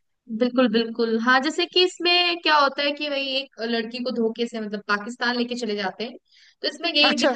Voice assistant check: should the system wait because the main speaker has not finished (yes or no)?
yes